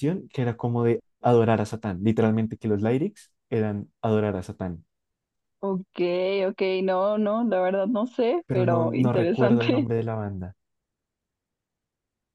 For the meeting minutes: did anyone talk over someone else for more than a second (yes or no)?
yes